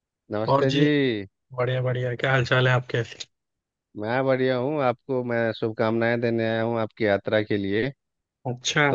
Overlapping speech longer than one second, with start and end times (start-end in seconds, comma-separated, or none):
none